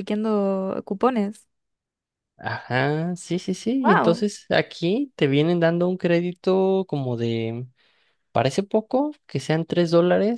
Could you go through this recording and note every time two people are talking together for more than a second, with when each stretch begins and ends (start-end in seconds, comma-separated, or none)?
none